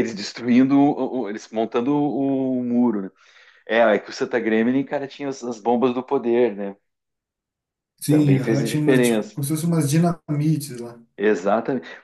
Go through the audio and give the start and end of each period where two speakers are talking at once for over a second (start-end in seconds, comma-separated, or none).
8.1-9.4